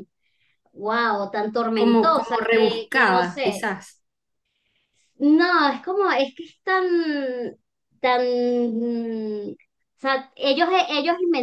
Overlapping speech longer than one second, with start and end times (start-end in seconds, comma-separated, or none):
1.7-3.7